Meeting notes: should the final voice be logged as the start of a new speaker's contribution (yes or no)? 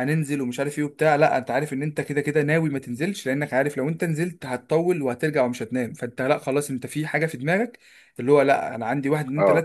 no